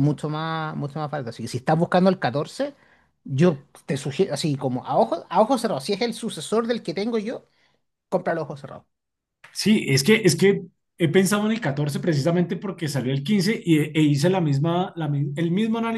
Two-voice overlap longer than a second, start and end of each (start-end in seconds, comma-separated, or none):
none